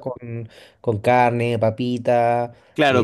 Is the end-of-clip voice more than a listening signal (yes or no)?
yes